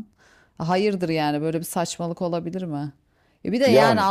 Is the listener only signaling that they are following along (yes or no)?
yes